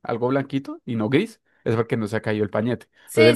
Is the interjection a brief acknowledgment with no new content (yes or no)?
no